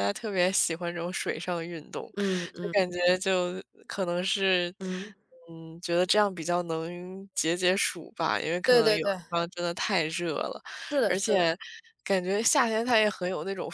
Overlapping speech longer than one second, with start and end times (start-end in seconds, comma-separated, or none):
none